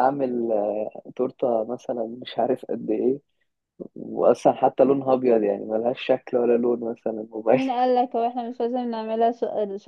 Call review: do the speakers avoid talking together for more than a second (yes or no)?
yes